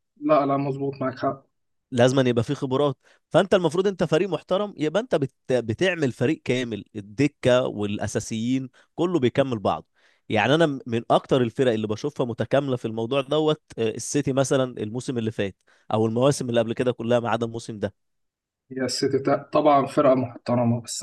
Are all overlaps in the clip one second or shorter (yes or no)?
yes